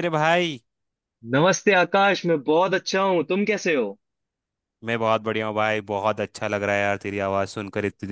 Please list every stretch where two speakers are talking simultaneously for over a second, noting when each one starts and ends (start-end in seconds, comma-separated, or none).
none